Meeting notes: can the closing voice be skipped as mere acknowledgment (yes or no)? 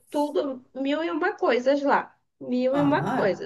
no